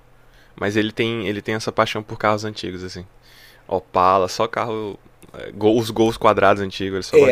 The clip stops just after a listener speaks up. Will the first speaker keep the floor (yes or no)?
no